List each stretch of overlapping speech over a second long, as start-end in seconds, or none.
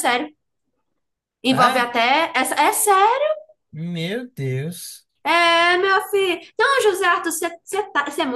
none